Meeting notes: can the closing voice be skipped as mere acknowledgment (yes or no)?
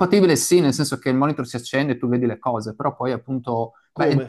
yes